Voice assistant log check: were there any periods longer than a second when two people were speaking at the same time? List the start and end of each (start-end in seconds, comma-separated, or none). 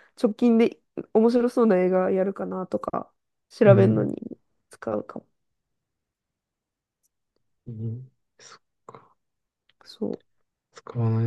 none